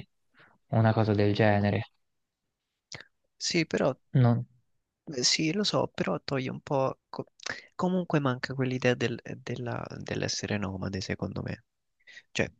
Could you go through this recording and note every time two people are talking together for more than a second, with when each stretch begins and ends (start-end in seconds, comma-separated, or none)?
none